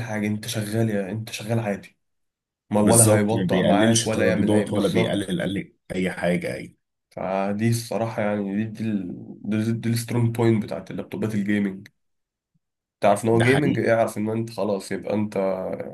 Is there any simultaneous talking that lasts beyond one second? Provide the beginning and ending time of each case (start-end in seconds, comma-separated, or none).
2.8-5.3